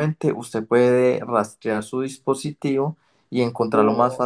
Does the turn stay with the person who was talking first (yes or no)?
no